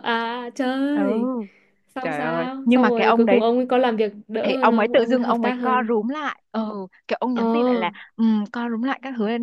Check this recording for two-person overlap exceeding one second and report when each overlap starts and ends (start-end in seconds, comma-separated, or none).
2.0-3.4, 4.4-6.0